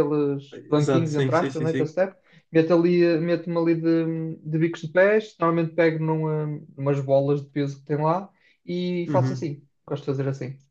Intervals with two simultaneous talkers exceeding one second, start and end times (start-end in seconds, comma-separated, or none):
0.5-1.9